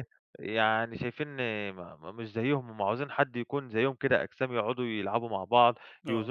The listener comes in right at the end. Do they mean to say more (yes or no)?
no